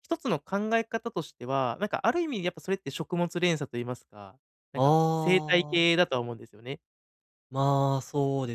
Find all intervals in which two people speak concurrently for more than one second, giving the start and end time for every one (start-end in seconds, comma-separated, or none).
4.7-5.9